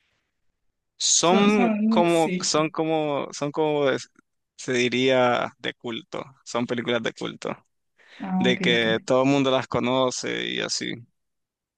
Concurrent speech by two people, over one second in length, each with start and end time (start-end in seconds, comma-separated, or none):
1.2-2.5